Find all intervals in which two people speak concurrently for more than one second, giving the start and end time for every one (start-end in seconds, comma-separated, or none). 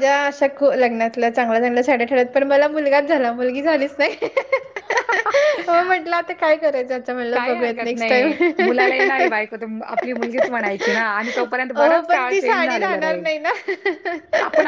7.3-8.8, 10.8-13.3